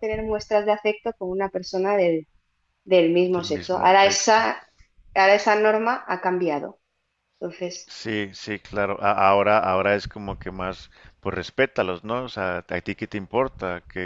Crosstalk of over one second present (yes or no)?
yes